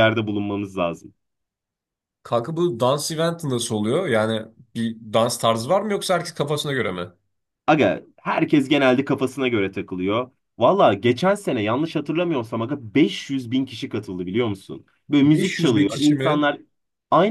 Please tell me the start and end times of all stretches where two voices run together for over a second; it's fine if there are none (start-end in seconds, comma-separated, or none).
15.2-16.5